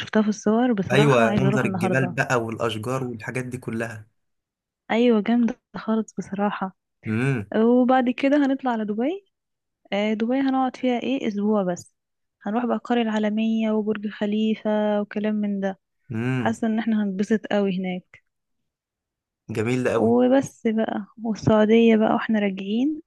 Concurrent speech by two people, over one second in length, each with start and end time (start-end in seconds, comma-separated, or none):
0.9-2.2